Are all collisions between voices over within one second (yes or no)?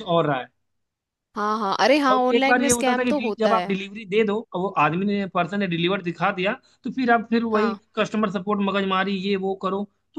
no